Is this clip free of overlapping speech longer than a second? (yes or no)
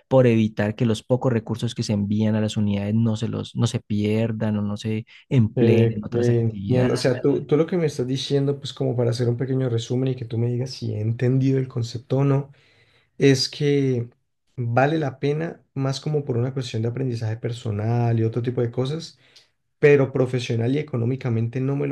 no